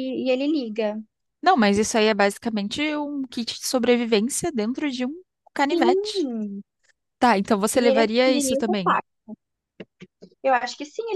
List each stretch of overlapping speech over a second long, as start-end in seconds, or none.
7.7-9.0